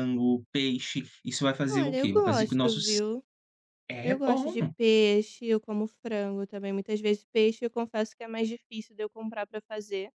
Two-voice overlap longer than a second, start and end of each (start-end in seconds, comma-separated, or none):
1.7-3.0